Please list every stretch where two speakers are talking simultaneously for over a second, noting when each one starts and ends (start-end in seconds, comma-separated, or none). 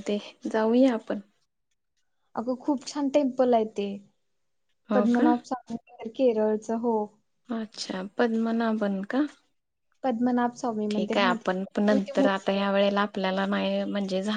10.9-12.7